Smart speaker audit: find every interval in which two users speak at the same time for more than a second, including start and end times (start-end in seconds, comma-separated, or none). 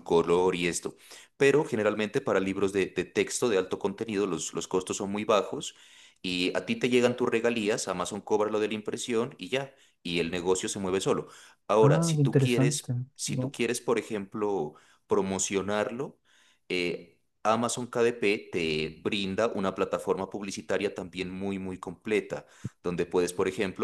11.8-13.6